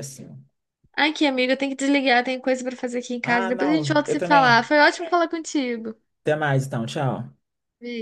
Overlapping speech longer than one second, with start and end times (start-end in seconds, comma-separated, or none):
3.2-4.7